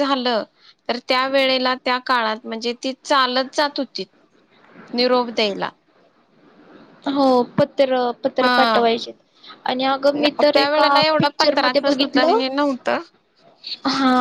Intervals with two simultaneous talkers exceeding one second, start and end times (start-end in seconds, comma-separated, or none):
10.2-12.4